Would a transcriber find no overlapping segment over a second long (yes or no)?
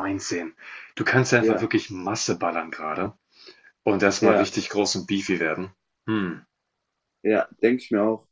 yes